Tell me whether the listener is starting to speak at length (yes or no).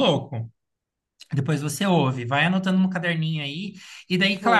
no